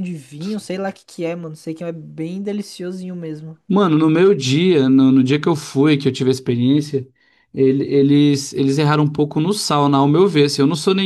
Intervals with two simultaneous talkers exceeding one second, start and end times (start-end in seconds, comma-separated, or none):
none